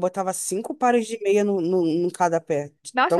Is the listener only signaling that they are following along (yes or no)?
no